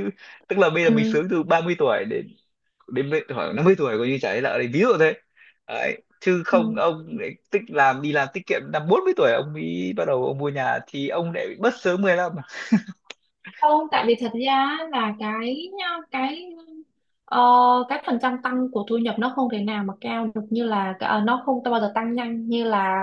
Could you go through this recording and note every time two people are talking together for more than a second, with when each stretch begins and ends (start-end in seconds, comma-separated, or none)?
none